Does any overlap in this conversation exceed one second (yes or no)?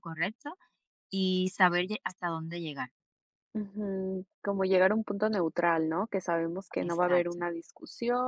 no